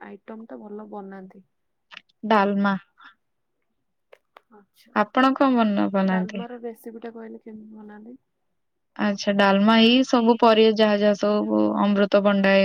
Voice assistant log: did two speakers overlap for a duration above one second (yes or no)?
yes